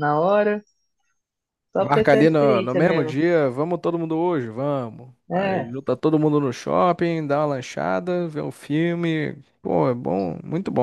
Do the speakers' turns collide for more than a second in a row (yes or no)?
yes